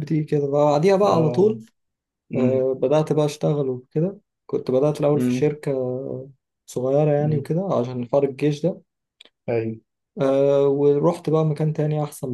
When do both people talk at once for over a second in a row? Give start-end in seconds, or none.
none